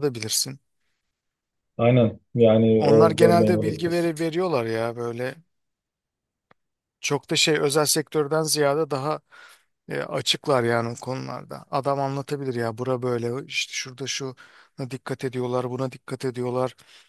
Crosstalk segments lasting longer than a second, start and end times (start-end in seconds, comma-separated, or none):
2.8-4.1